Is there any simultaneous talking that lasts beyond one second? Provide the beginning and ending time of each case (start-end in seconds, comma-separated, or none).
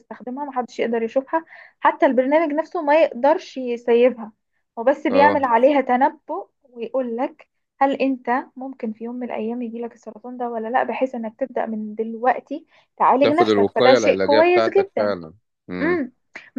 13.2-15.1